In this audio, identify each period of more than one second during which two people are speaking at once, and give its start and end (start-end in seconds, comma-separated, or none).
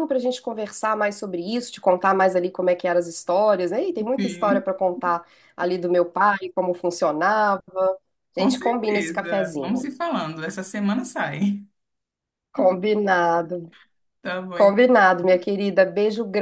8.3-9.8